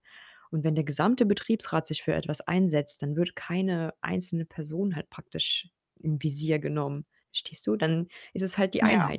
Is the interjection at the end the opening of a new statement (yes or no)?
no